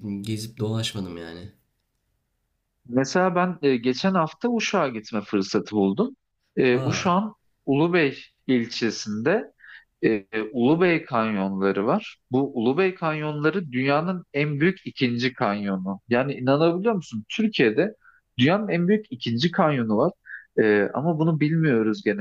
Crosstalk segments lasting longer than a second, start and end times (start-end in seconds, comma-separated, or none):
none